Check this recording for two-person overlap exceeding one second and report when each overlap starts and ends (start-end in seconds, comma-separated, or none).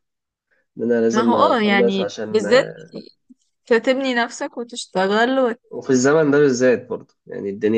1.1-2.5